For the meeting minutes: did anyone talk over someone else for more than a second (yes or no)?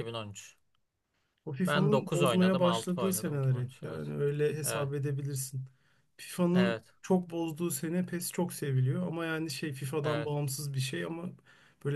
yes